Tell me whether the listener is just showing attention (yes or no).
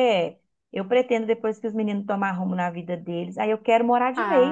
no